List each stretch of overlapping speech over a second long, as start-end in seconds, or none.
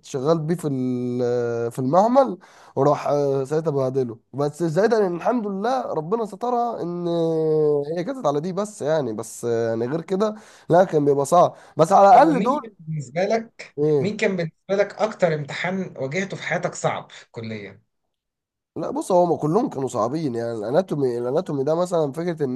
none